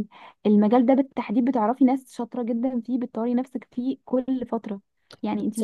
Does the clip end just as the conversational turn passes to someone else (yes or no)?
yes